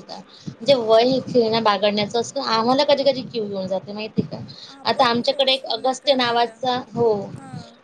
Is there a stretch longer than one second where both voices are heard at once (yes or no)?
yes